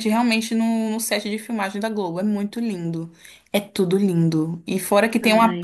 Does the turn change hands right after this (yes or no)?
no